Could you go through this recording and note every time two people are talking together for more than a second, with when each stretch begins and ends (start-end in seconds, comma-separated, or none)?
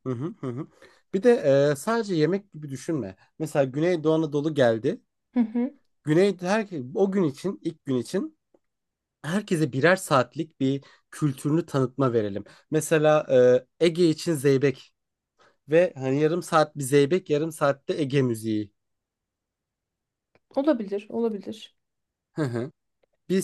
none